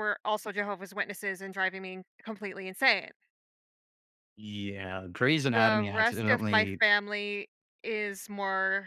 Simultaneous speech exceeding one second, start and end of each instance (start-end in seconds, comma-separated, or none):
5.5-6.8